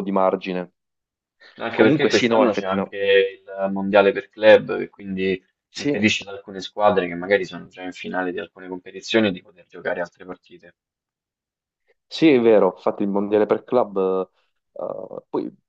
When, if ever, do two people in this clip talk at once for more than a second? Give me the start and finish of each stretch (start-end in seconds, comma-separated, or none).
1.7-3.0